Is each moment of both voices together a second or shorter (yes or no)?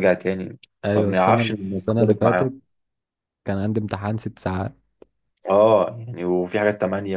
no